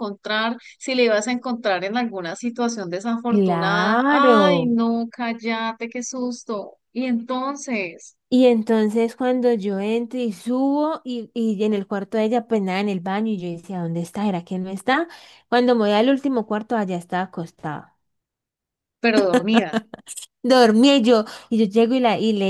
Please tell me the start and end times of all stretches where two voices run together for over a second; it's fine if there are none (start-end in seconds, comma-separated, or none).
3.3-4.8